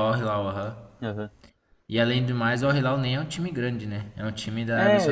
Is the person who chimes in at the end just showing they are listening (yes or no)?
no